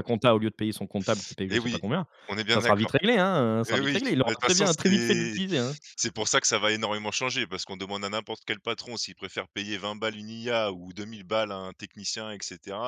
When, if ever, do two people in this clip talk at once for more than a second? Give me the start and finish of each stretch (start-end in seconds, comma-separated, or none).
3.7-5.3